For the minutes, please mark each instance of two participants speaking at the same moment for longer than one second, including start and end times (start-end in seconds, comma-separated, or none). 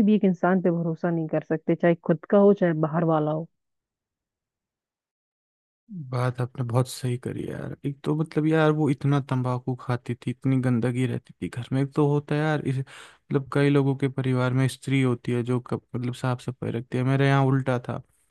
none